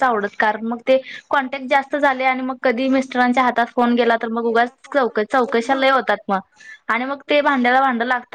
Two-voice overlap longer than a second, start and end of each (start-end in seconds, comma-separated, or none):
3.9-6.1